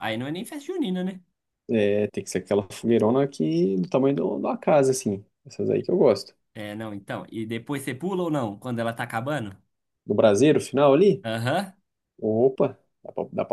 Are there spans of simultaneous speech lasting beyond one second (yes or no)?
no